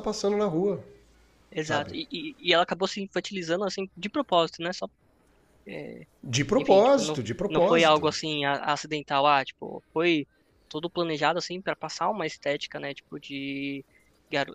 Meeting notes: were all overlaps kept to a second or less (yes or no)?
no